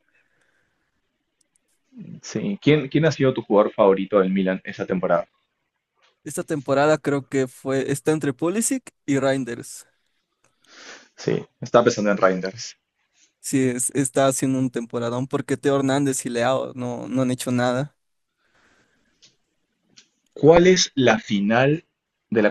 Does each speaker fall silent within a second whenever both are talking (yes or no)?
yes